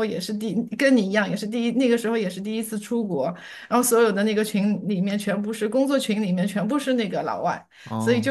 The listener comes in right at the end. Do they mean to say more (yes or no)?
no